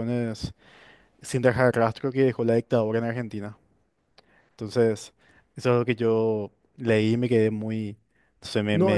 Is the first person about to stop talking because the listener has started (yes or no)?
yes